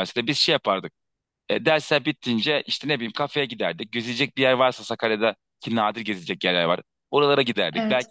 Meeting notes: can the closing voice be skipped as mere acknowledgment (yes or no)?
yes